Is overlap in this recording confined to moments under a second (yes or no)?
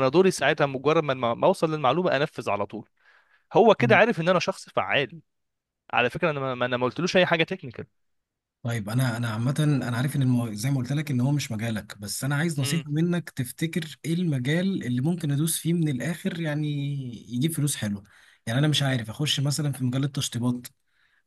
yes